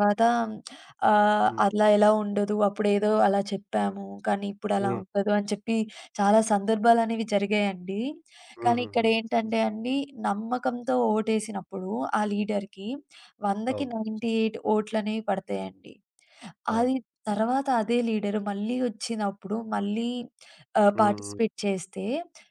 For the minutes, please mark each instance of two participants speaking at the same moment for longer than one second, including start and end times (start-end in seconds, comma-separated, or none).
none